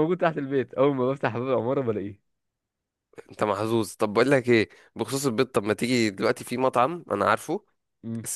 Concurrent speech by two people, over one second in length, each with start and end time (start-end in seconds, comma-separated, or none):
none